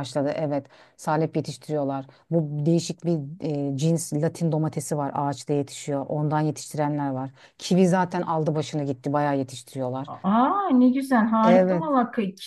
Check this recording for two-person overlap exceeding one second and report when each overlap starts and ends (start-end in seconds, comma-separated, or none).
none